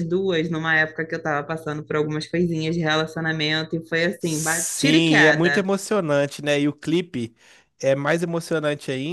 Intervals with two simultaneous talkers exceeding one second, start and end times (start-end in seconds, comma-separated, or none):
4.2-5.7